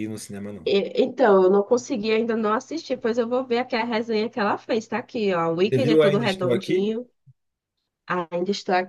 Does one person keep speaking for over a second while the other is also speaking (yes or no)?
yes